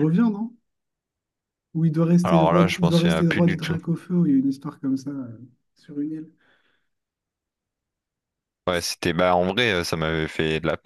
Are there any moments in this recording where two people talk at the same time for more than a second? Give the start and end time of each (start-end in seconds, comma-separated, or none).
2.2-3.8